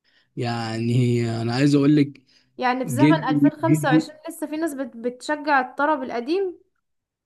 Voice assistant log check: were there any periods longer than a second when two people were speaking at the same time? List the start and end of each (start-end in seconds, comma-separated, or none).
2.8-4.1